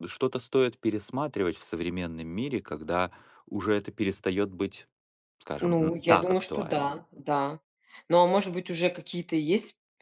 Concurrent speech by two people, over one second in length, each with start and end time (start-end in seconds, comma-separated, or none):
5.6-6.9